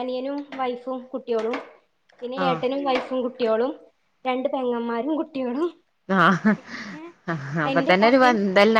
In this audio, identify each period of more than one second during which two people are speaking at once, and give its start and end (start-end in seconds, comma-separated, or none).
none